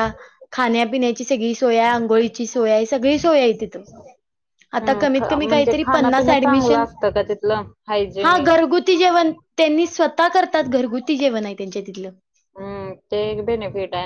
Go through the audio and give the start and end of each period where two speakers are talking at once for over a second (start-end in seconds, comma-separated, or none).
4.8-6.8